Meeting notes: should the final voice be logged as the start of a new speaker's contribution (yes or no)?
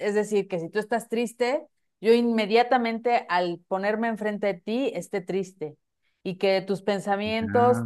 no